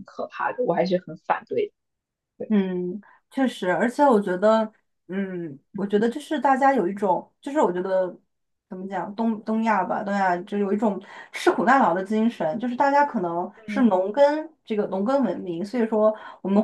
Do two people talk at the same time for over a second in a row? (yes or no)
no